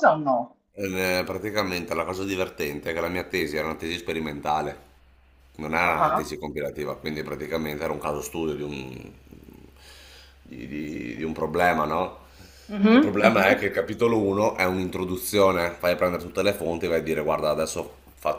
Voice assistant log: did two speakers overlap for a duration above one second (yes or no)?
no